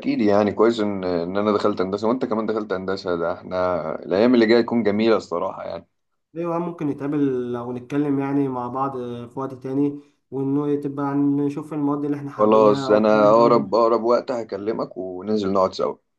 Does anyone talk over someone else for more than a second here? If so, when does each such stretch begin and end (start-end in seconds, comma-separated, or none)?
12.4-13.8